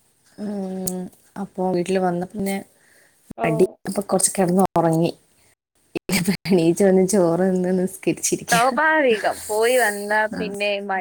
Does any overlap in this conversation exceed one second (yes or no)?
no